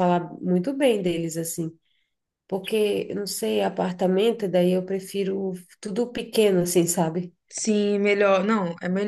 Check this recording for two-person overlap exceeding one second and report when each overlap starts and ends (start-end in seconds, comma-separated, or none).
none